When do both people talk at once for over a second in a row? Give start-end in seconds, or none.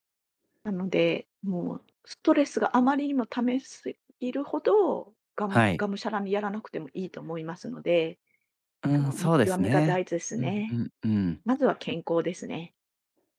8.9-10.8